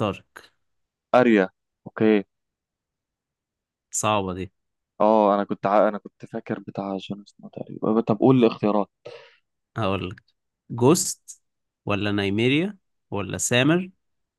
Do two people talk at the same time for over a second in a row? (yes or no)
no